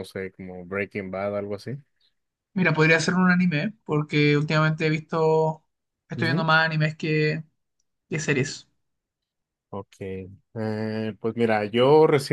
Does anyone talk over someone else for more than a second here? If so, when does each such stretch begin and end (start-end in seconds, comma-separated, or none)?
none